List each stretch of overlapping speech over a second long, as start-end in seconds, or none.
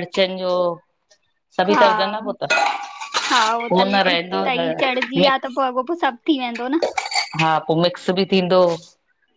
3.7-5.6